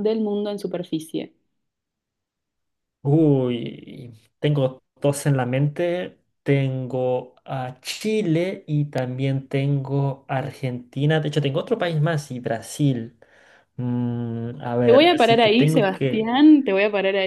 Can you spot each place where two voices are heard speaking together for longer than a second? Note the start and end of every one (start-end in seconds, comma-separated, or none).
14.8-16.3